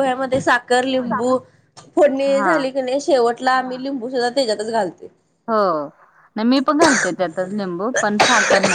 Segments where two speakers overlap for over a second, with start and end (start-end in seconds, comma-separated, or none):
none